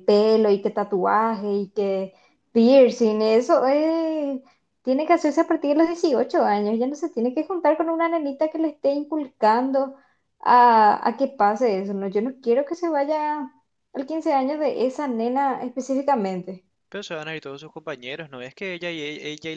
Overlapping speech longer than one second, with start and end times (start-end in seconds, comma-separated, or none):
none